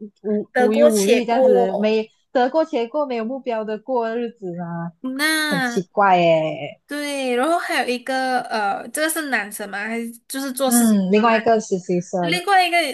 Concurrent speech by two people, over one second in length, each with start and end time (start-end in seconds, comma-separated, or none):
0.5-2.0